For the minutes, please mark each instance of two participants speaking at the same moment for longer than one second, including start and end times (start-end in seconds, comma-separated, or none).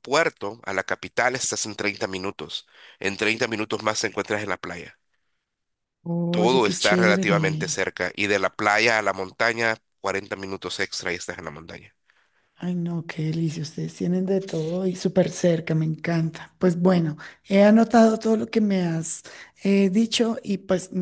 6.3-7.8